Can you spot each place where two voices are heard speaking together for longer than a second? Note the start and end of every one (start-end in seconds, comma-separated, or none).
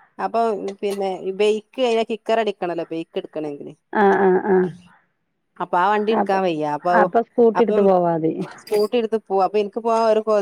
none